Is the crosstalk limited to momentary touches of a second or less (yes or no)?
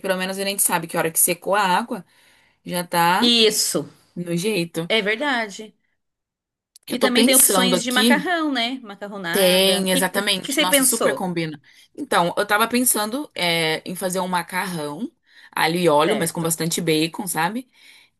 no